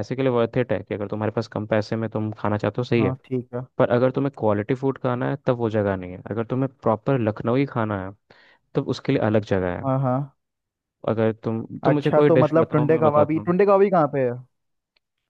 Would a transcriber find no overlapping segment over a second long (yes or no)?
no